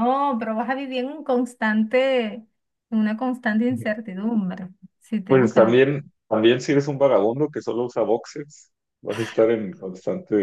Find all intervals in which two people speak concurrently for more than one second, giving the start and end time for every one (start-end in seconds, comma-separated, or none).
none